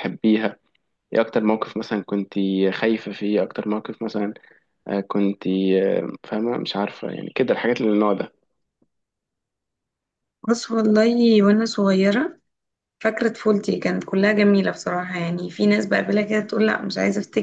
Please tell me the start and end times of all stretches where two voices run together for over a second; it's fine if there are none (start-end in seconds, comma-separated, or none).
none